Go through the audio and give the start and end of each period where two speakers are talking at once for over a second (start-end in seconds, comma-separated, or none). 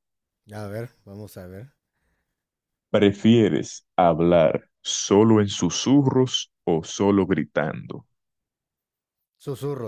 none